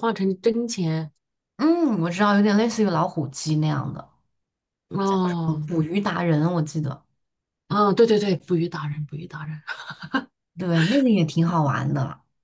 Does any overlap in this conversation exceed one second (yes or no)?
no